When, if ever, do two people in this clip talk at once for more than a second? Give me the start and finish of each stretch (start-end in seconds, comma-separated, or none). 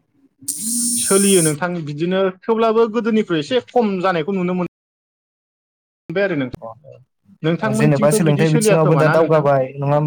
7.8-9.4